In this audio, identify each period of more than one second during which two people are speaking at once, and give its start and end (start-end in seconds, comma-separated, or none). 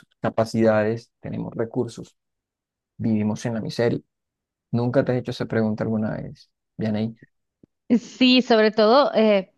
none